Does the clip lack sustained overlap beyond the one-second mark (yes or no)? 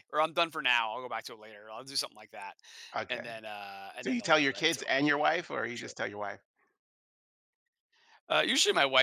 no